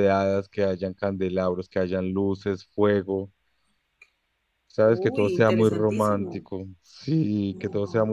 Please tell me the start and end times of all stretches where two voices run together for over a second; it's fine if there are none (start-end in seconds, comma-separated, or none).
4.8-6.4